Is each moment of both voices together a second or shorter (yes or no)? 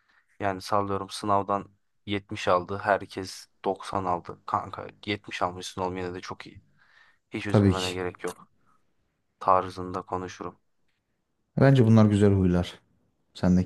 yes